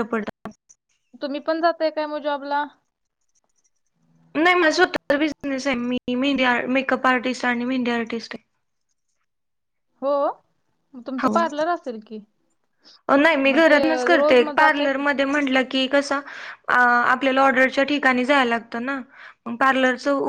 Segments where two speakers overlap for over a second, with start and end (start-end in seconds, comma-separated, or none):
13.4-15.0